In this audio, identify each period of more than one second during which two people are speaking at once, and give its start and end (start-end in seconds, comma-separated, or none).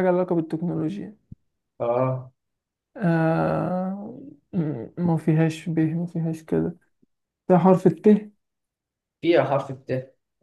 none